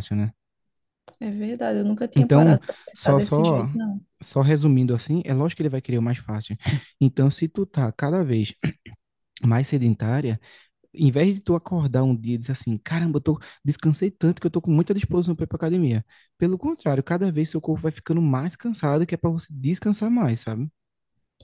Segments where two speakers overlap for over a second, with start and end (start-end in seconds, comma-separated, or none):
2.2-3.7